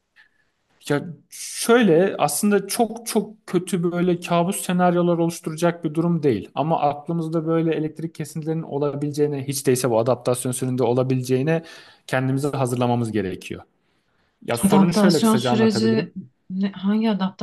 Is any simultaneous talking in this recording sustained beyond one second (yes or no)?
yes